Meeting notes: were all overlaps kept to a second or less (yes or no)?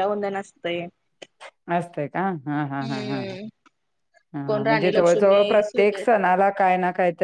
no